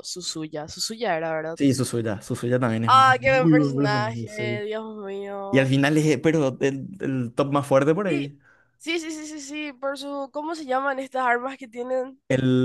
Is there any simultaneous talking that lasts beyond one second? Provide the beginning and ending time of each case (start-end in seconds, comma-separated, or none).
2.9-4.6